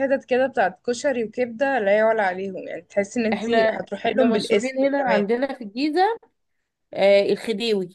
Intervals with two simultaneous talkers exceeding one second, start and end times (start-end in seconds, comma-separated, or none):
3.3-5.2